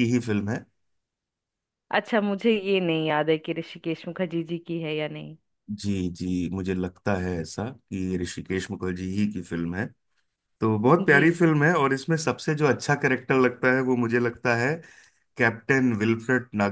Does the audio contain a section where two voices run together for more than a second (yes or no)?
no